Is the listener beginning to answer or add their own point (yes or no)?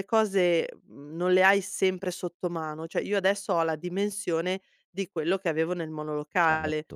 no